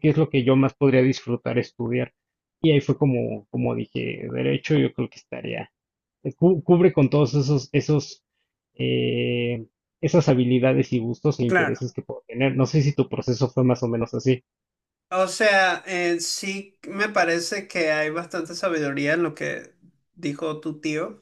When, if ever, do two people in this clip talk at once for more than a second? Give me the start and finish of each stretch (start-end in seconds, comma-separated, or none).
none